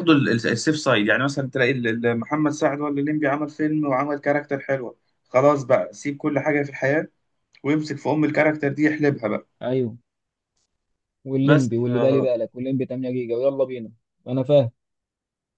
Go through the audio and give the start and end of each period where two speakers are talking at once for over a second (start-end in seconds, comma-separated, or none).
none